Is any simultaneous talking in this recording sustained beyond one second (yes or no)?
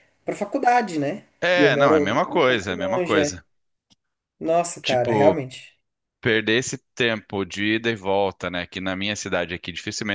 yes